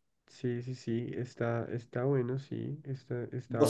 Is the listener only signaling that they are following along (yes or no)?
no